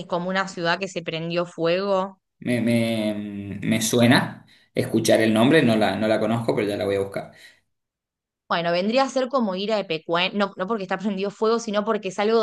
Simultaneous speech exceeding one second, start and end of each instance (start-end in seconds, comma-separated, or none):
none